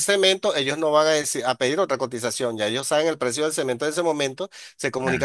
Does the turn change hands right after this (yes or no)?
no